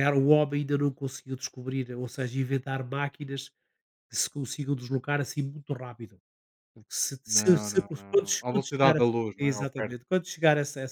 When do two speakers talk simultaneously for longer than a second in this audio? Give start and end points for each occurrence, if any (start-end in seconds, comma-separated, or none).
7.3-10.0